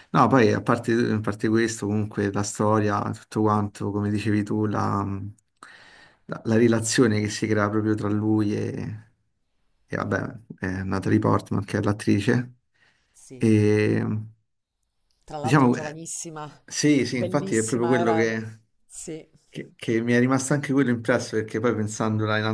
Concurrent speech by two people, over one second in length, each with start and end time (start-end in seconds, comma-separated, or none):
17.1-18.4